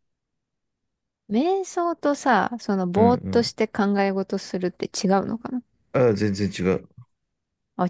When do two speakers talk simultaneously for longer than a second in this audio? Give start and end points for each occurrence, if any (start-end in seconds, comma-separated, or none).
none